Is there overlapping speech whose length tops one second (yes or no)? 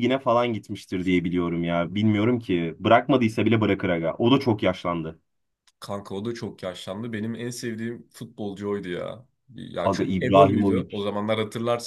yes